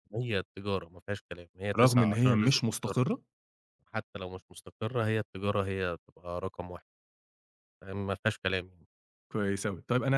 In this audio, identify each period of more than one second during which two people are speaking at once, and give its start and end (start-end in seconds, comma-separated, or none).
1.8-3.0